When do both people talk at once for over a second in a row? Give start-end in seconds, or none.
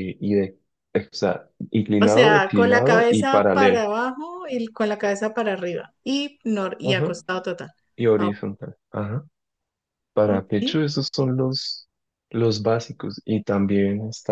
2.0-3.8